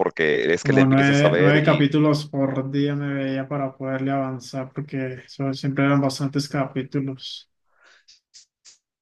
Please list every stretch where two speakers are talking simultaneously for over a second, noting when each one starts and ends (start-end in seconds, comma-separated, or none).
0.6-1.9